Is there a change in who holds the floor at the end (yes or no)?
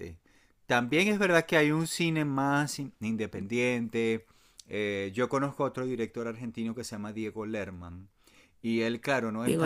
no